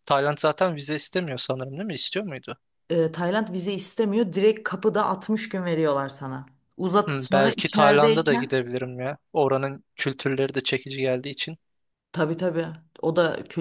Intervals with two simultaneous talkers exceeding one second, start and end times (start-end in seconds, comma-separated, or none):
7.1-8.6